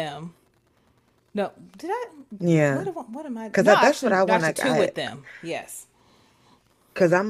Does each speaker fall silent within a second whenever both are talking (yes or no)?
no